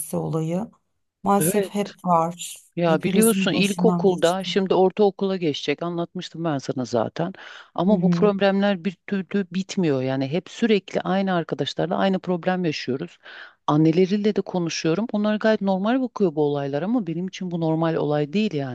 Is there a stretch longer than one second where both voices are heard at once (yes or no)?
yes